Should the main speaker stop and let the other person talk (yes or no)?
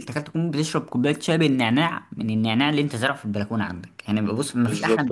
yes